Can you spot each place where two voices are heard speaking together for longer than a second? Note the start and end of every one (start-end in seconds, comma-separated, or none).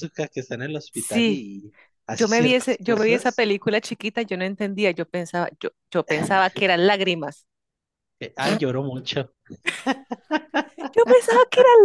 2.1-3.5